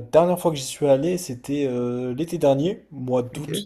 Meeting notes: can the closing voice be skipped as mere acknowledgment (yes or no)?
yes